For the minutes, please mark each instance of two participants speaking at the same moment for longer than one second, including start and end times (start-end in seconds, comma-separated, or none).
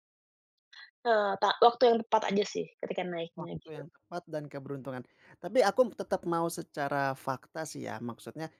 none